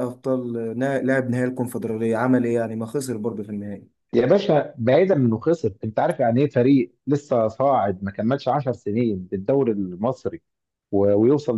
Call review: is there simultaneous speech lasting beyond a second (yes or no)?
no